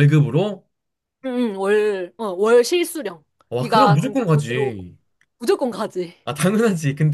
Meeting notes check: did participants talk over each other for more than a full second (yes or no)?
yes